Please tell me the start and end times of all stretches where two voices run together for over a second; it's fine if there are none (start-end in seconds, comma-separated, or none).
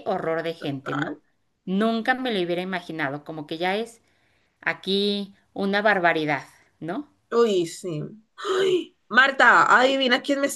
none